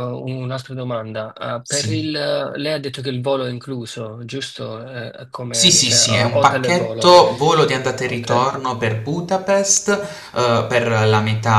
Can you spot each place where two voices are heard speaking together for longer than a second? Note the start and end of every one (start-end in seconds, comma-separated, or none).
5.5-7.1